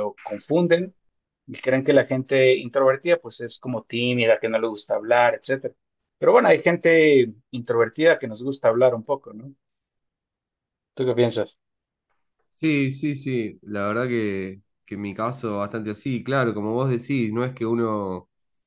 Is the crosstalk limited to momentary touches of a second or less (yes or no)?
yes